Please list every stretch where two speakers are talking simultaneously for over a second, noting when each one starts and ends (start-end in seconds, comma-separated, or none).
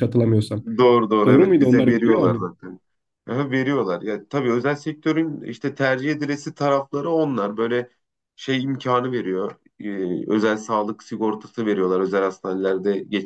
1.2-2.5